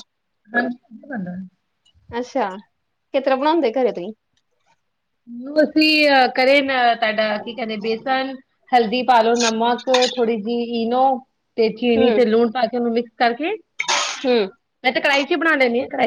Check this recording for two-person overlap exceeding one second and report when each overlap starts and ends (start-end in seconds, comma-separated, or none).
none